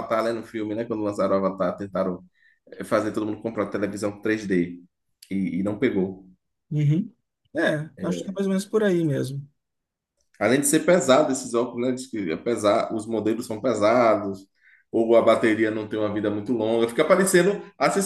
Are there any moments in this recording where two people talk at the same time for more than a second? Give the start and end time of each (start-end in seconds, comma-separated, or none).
none